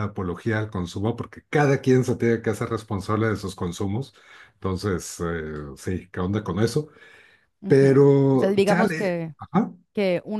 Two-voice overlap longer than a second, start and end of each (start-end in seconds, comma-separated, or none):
7.7-9.3